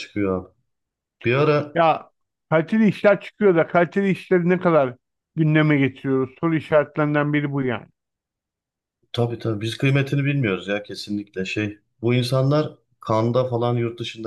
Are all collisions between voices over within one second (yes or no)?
yes